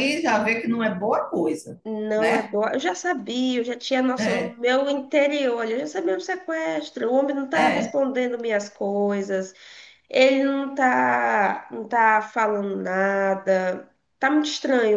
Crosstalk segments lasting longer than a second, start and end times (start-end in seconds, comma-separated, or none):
none